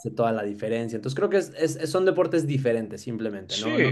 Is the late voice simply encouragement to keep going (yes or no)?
yes